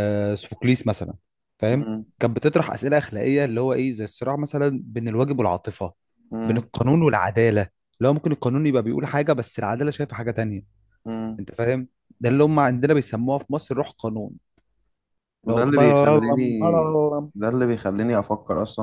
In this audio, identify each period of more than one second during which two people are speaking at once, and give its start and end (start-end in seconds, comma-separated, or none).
15.4-16.9